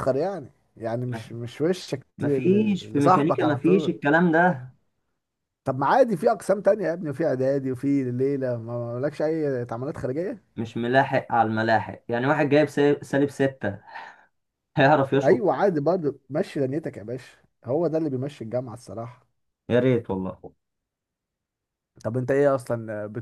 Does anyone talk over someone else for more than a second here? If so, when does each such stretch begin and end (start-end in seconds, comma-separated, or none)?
2.2-3.9